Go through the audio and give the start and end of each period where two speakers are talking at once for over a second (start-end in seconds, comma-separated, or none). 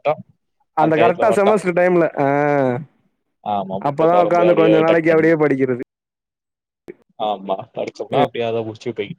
3.9-5.3